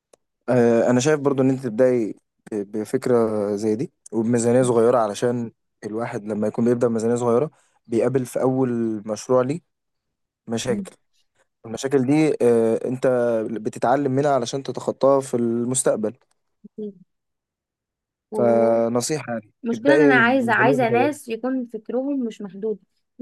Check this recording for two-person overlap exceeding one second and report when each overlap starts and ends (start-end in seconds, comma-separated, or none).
19.9-21.2